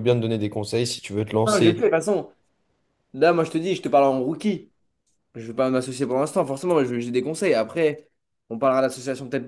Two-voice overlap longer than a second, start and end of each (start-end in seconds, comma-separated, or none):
none